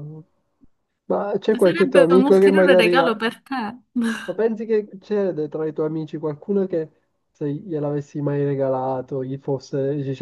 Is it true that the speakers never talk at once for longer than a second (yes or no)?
no